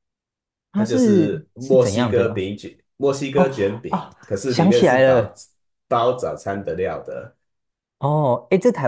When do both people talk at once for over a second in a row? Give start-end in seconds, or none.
0.7-2.5, 3.3-5.3